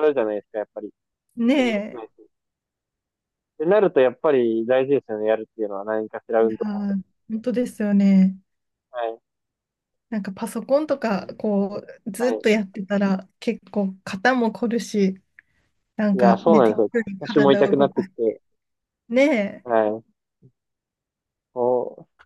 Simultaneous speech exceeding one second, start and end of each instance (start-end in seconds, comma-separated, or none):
16.1-18.1